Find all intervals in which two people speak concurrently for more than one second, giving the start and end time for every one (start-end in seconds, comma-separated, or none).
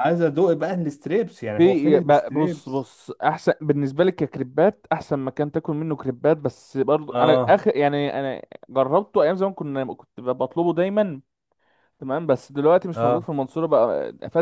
1.6-2.9